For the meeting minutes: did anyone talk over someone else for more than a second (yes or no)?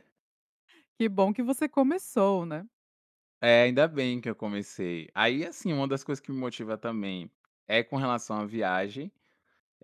no